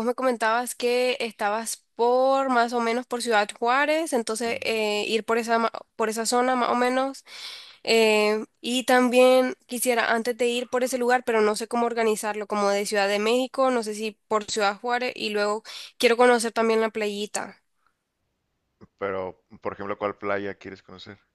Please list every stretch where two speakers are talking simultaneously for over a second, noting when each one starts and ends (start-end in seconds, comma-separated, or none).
none